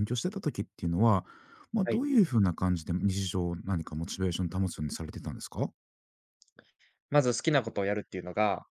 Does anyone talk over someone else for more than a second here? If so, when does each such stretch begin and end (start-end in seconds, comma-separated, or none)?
none